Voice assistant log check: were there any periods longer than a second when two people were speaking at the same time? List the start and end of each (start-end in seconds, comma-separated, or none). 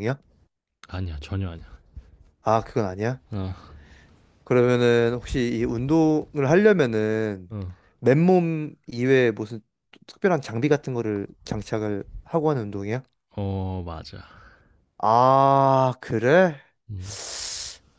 none